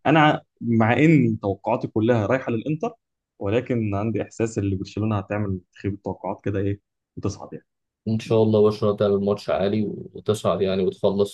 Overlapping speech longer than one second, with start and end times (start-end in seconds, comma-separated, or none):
none